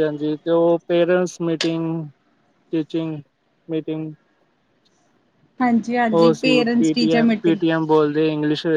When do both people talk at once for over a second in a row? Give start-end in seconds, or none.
6.1-7.6